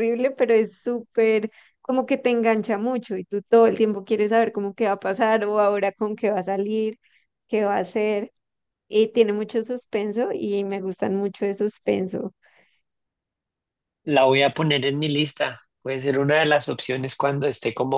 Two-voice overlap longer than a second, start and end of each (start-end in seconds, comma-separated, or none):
none